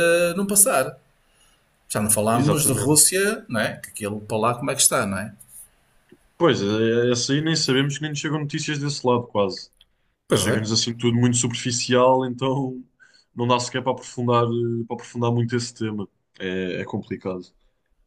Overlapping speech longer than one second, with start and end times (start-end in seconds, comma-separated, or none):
none